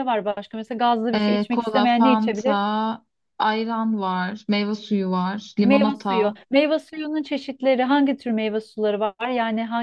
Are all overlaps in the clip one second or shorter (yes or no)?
no